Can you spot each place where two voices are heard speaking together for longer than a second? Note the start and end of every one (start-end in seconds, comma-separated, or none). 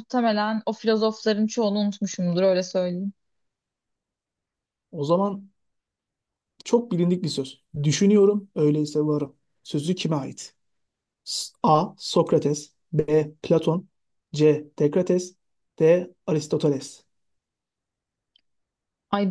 none